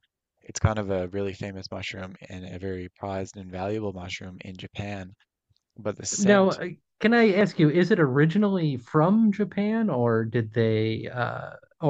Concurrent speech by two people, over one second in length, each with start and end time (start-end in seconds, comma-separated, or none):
none